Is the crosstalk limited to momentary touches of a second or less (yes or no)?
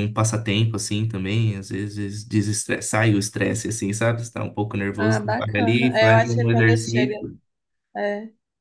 no